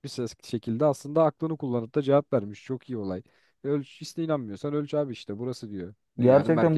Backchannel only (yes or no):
no